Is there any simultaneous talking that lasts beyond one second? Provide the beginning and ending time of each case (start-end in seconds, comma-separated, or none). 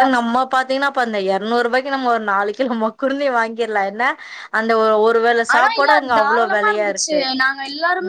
5.5-7.2